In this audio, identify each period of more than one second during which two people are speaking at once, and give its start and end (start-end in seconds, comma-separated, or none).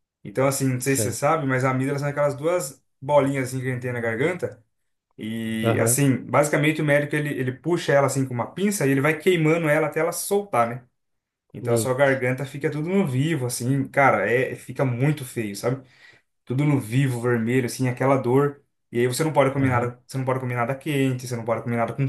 none